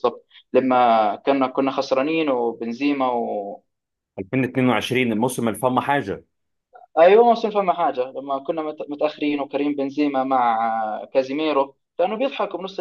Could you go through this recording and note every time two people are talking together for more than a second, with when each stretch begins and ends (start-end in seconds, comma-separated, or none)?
none